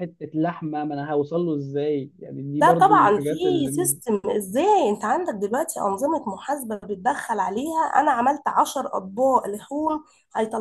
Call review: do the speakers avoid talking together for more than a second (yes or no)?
no